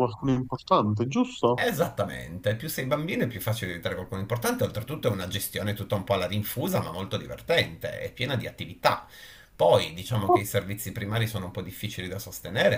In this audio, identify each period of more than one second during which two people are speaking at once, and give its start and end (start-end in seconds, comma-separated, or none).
none